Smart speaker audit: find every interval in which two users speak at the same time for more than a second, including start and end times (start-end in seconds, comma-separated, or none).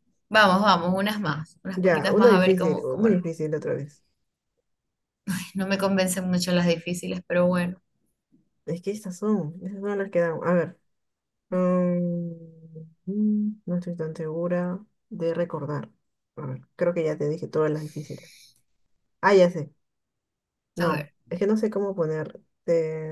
1.7-3.3